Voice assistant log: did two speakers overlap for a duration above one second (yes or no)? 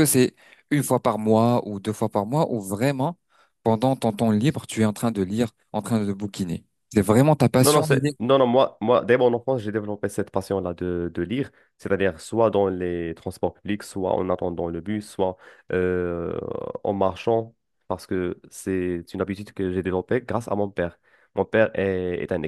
no